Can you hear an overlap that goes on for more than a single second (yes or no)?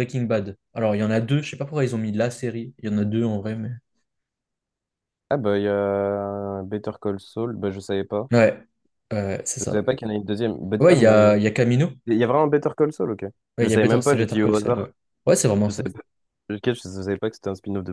yes